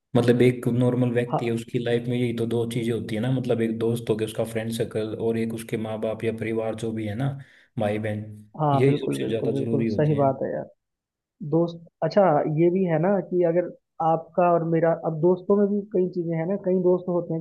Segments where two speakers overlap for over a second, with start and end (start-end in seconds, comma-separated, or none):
8.7-10.3